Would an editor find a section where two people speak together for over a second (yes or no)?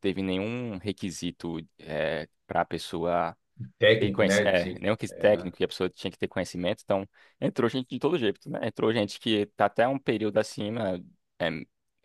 yes